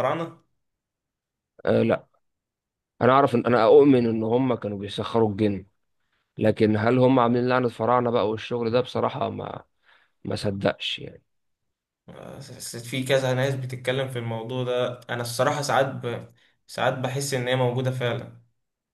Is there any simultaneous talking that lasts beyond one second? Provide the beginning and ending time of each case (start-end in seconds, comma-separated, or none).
none